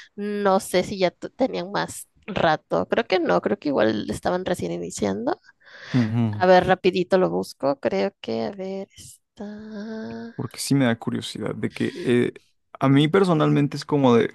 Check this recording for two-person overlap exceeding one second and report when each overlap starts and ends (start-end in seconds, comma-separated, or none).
none